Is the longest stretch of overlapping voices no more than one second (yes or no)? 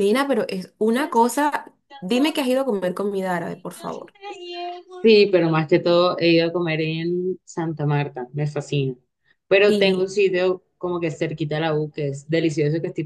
yes